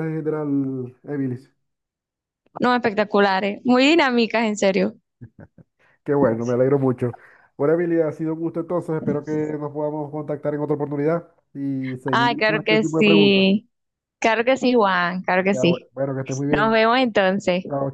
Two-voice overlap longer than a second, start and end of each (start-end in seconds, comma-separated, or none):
12.1-13.5